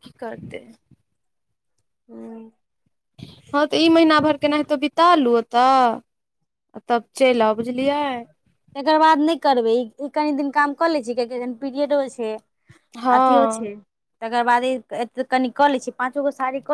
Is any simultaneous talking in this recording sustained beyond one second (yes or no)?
no